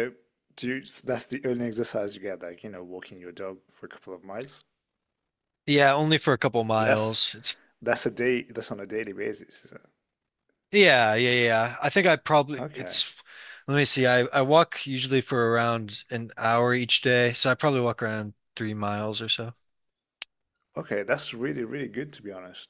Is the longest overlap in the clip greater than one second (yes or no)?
no